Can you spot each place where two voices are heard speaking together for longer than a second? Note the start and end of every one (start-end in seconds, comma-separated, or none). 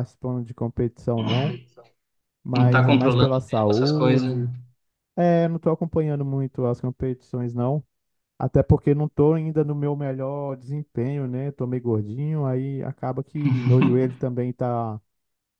2.5-4.3